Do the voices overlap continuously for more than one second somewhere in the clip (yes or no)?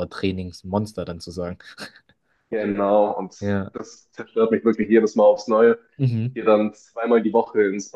no